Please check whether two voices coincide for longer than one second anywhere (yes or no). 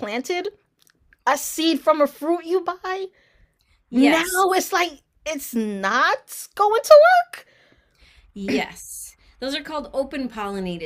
no